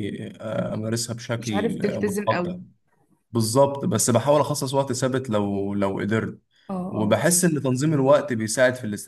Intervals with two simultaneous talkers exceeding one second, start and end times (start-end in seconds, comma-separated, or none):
1.4-2.6